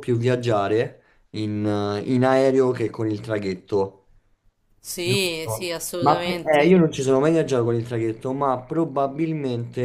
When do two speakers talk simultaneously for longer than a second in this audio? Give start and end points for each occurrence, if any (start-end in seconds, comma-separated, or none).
5.0-6.9